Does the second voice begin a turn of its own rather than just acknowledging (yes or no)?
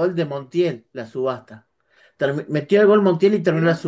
no